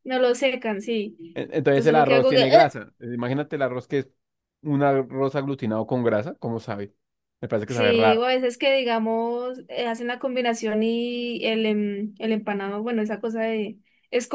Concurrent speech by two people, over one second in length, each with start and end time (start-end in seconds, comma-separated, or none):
1.3-2.8